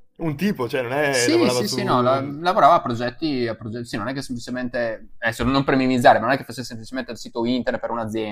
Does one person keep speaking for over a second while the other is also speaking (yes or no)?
yes